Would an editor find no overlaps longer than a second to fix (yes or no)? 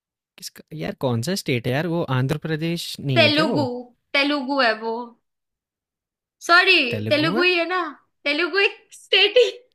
yes